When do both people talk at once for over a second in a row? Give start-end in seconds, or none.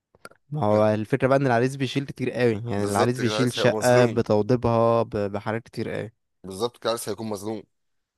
2.7-4.2